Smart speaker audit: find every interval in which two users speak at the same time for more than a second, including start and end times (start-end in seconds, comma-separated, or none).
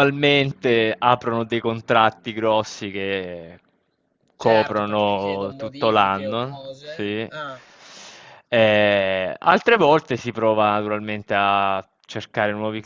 4.4-7.3